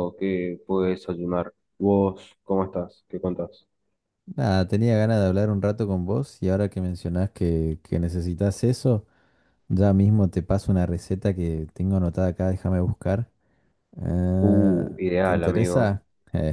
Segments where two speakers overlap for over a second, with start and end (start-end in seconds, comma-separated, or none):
14.4-16.0